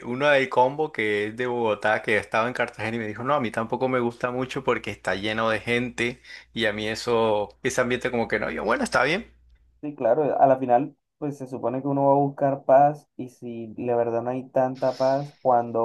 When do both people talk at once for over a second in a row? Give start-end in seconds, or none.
none